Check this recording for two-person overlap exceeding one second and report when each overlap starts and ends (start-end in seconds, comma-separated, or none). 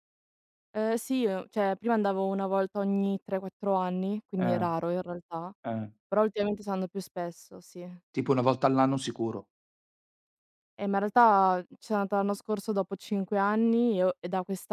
none